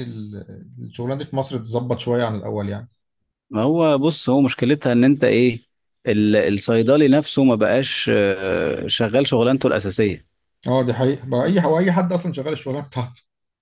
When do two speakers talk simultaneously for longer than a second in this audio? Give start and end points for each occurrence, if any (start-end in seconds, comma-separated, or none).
none